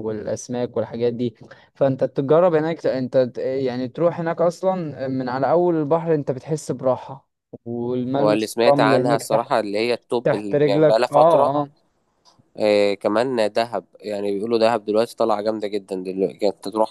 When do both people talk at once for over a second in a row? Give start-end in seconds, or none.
8.2-9.5, 10.2-11.5